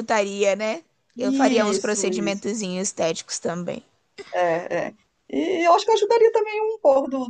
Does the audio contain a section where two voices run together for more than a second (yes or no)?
yes